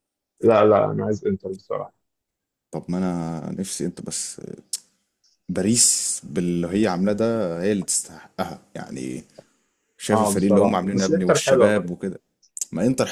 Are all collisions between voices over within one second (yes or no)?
no